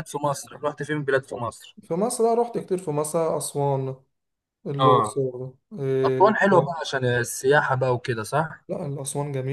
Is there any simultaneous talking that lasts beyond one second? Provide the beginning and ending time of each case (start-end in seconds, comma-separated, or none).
none